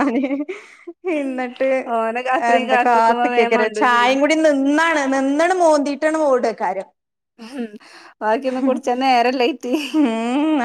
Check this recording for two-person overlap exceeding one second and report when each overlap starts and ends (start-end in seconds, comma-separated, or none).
2.5-4.2